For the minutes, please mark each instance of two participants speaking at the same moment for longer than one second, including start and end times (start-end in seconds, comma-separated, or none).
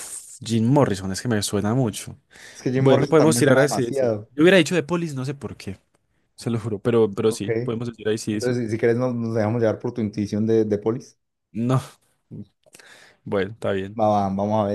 2.7-4.3